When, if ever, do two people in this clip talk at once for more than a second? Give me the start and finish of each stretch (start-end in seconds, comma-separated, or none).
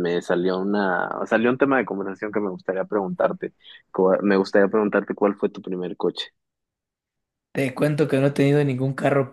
none